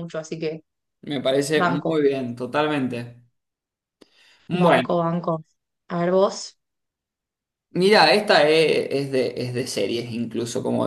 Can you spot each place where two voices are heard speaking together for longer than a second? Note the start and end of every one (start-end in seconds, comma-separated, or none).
none